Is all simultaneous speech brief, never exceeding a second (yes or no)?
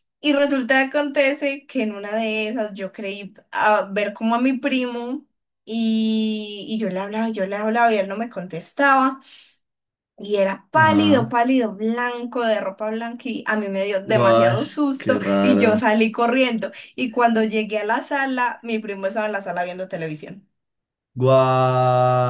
no